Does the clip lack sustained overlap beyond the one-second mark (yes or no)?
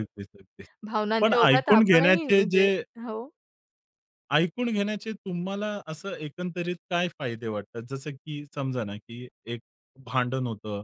no